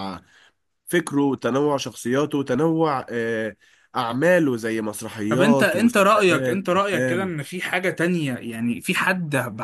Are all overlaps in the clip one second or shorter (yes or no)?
no